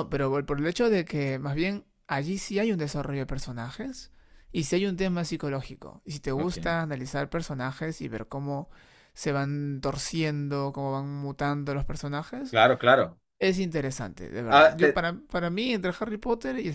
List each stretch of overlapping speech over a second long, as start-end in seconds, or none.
none